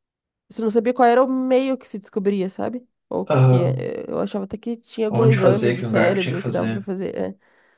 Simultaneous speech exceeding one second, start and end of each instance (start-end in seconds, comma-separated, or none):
5.1-6.9